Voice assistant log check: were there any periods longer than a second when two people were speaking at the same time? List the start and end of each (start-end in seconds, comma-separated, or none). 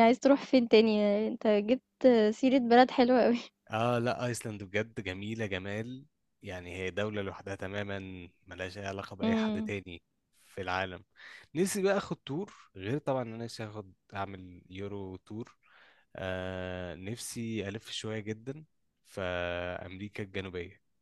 none